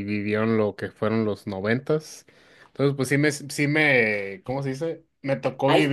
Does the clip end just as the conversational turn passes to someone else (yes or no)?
no